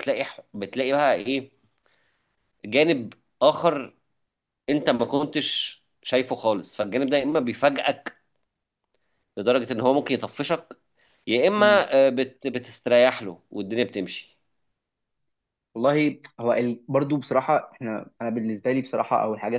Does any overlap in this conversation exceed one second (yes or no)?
no